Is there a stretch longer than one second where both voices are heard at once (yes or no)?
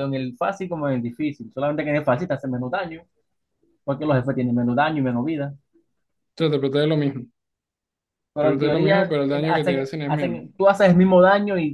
yes